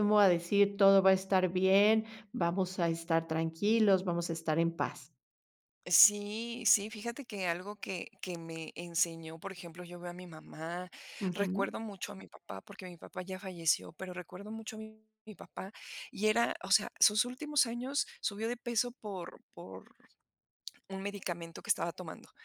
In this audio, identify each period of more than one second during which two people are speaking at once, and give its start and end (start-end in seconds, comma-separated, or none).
none